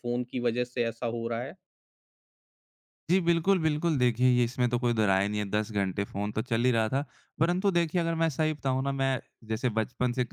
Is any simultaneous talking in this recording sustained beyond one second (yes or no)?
no